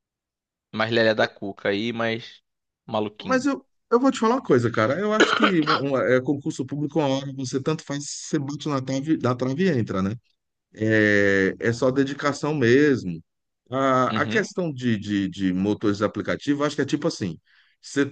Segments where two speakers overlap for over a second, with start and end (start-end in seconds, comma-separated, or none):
none